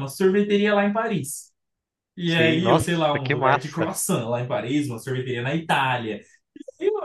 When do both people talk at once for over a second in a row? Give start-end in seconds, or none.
2.2-3.9